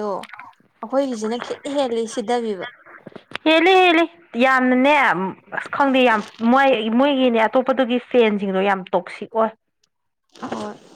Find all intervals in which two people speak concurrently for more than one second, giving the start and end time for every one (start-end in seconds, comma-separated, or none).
none